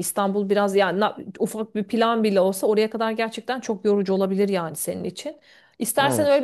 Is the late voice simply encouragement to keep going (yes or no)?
yes